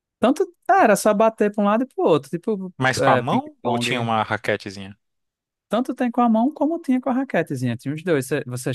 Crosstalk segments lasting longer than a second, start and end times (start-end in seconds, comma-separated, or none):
2.8-4.1